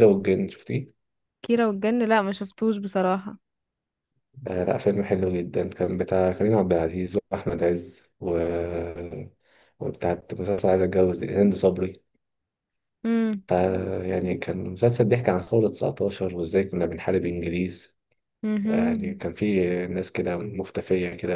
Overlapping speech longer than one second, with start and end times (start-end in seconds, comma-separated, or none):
none